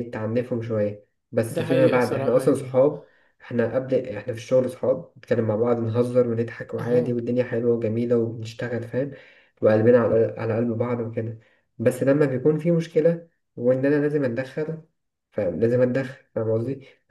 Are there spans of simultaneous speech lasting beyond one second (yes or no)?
yes